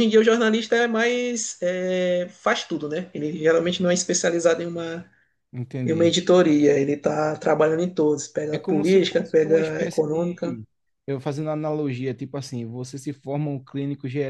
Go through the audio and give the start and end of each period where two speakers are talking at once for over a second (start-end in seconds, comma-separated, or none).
8.5-10.6